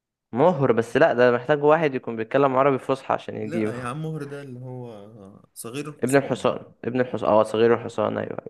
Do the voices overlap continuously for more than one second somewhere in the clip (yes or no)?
no